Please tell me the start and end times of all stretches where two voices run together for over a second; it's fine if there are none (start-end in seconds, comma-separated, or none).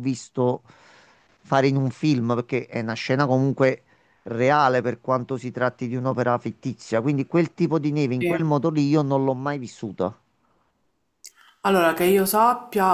none